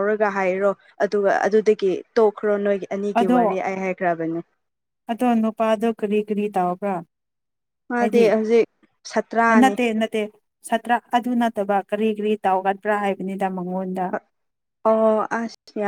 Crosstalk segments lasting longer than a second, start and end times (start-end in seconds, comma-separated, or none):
none